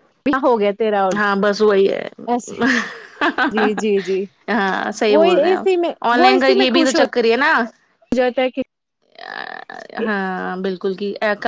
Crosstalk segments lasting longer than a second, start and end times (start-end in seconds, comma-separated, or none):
5.1-7.0